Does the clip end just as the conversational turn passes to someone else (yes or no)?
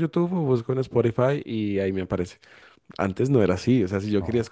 no